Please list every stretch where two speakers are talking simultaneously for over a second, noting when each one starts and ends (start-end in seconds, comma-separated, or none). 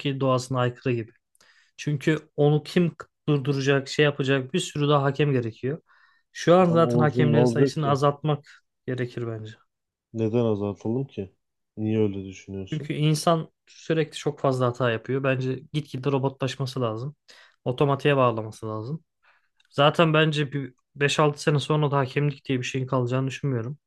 6.7-8.0